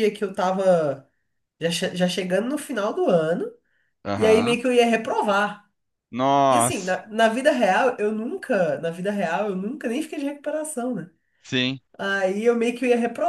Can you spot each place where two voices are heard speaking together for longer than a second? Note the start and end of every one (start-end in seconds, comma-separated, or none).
none